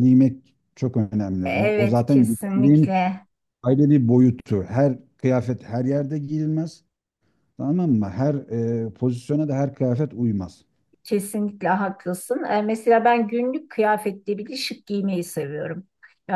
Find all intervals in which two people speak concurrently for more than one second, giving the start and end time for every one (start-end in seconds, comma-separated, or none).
1.4-3.0